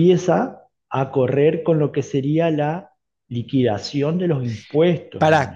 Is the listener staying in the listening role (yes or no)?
no